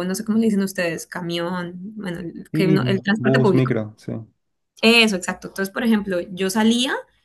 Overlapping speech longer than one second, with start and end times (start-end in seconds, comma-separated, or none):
2.5-3.7